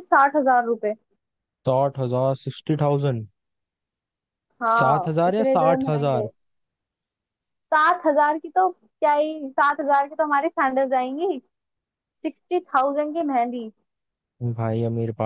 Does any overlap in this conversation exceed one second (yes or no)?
yes